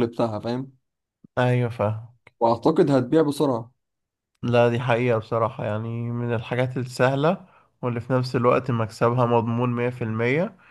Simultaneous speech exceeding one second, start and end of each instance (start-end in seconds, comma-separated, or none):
none